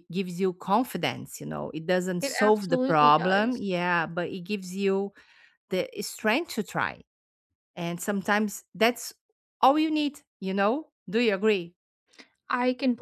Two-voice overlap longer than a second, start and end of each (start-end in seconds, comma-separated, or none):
2.2-3.7